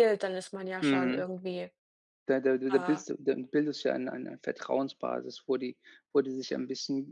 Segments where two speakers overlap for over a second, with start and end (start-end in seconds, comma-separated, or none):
none